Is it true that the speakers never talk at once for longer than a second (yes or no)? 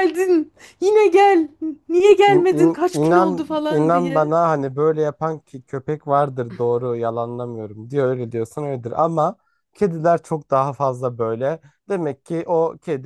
no